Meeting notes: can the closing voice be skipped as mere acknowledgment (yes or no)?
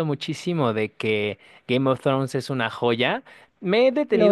yes